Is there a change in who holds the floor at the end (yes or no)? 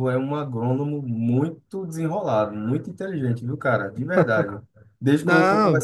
no